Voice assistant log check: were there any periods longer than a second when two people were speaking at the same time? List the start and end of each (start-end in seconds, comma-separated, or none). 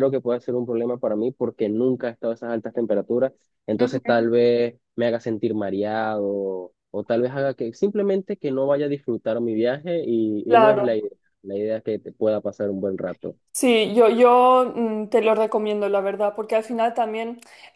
none